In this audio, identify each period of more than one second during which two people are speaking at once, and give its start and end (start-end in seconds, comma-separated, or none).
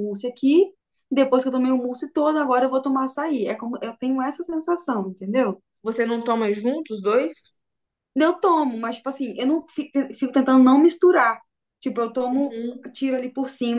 none